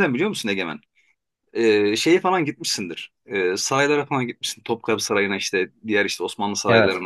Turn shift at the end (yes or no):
no